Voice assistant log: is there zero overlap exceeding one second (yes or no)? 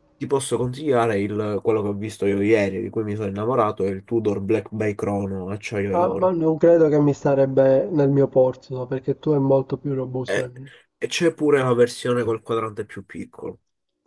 yes